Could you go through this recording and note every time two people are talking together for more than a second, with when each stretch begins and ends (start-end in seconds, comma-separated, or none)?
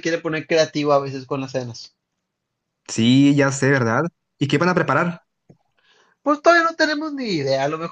none